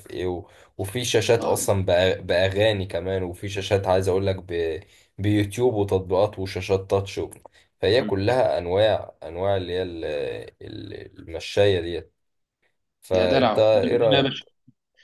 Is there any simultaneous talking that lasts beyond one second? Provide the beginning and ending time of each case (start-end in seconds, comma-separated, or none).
13.1-14.4